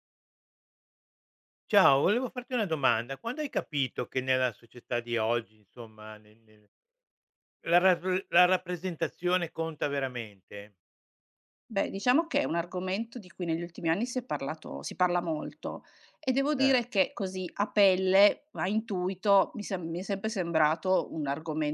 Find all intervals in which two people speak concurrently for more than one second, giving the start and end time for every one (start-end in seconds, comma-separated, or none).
none